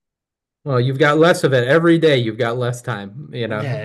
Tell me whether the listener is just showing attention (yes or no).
yes